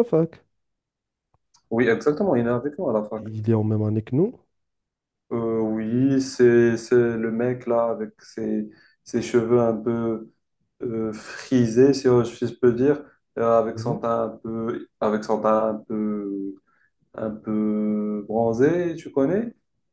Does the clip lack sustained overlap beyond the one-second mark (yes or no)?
yes